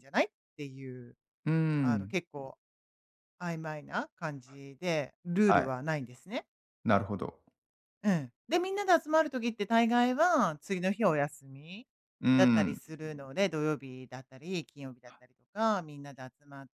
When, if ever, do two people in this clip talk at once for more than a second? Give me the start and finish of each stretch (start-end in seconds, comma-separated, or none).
none